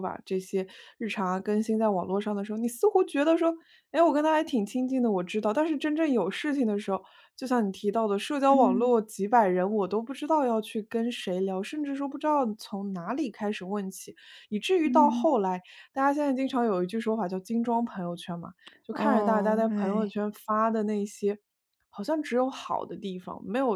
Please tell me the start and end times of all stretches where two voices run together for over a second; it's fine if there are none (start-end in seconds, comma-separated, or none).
18.9-20.1